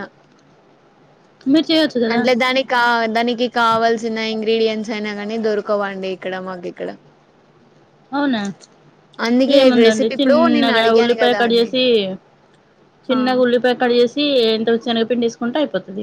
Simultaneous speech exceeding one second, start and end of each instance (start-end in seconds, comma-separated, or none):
9.6-11.7